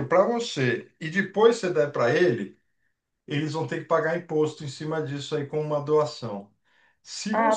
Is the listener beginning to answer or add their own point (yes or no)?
no